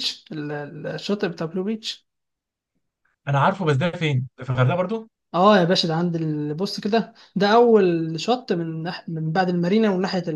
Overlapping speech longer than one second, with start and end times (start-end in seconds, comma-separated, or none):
none